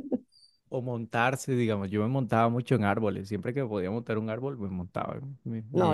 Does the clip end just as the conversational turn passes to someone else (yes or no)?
yes